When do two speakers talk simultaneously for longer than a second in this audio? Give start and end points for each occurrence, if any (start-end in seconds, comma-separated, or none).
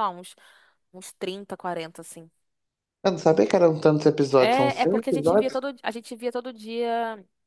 4.4-5.6